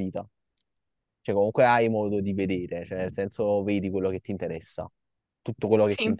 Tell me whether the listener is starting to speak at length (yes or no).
no